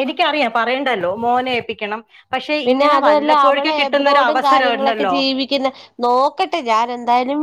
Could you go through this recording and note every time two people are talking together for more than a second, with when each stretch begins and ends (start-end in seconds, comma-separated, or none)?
2.7-5.2